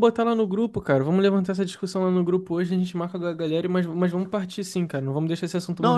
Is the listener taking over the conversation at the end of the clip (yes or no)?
yes